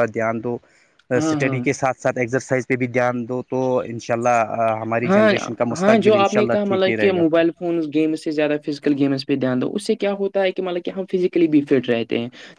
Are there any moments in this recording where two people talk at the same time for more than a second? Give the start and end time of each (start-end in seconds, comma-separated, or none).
none